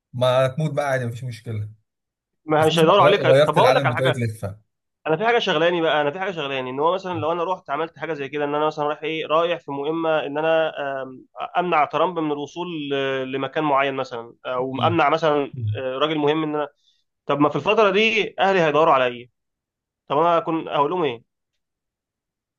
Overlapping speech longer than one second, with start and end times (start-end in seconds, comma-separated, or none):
2.6-4.2